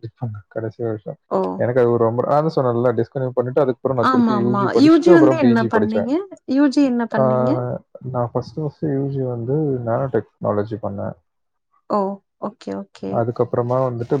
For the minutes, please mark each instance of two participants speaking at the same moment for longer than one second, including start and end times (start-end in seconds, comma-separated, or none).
4.1-6.0